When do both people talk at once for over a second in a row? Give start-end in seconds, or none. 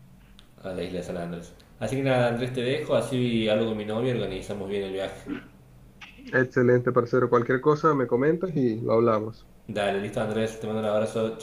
none